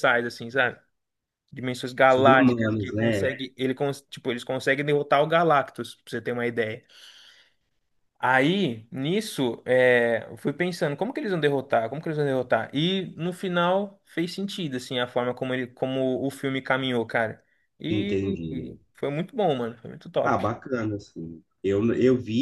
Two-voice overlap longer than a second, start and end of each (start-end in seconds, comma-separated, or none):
2.1-3.3